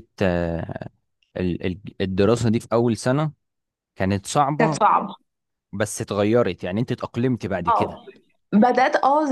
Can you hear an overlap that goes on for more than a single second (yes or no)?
no